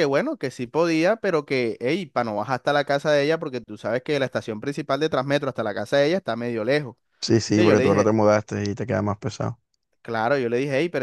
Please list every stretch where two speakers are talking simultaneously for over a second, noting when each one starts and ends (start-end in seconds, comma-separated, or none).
none